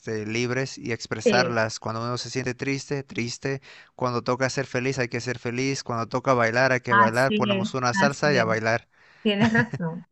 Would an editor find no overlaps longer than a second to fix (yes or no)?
no